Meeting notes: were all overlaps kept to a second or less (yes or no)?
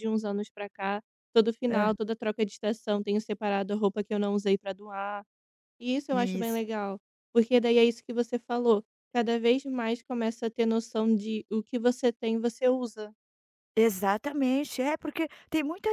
yes